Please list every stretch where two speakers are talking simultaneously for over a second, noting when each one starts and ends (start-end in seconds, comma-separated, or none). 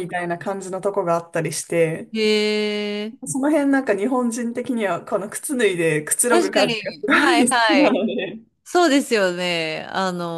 6.3-8.0